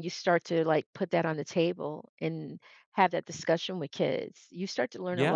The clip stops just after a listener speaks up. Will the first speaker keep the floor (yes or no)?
yes